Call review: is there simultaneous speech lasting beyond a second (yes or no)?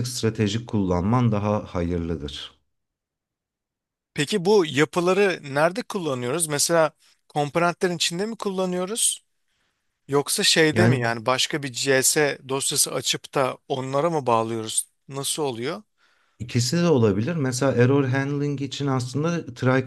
no